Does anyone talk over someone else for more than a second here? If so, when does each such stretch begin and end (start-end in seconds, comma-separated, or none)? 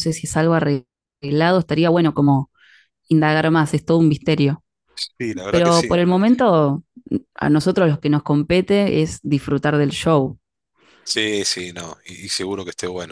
none